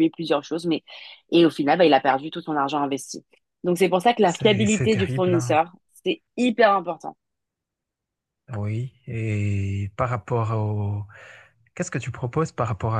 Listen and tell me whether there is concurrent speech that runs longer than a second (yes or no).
yes